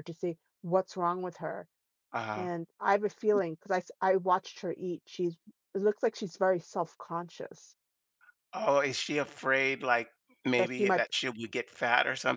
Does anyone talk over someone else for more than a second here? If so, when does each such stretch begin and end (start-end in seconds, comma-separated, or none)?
none